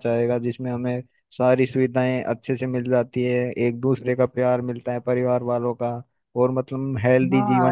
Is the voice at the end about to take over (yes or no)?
yes